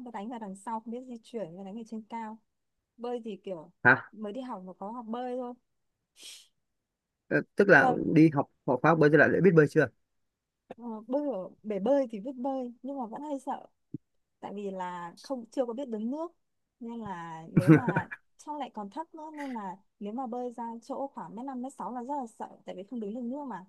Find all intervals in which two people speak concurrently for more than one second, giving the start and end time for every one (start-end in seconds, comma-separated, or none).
none